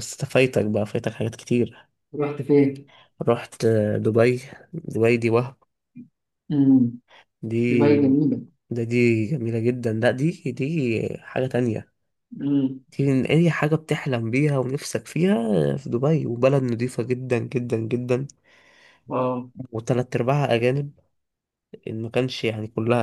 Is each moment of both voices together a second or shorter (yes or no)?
yes